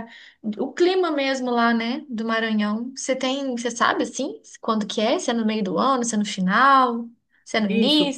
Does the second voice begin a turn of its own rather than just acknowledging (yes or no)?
yes